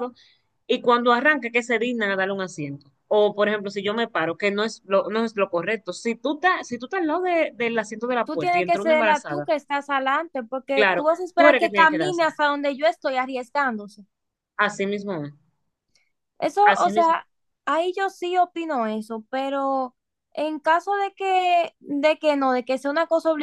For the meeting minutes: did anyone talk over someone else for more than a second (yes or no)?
yes